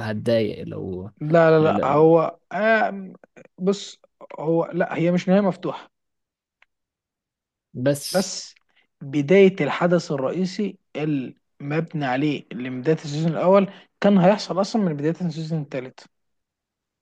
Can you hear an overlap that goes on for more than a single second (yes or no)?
no